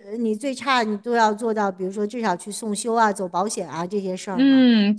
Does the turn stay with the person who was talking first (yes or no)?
no